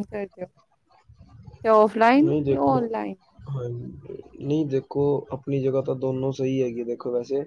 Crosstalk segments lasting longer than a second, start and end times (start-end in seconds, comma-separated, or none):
none